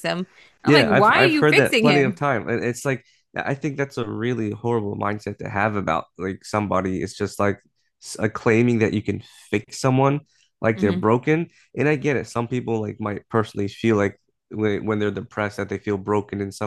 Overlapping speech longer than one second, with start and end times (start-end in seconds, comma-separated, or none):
0.6-2.2